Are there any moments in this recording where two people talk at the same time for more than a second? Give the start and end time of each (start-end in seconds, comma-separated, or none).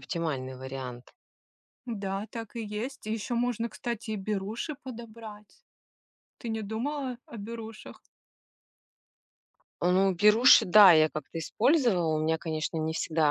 none